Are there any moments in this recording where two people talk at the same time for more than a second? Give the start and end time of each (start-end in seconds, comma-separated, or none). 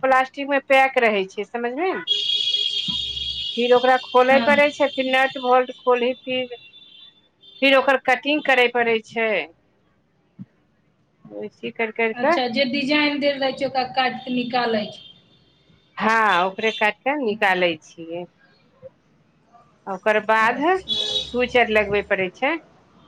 none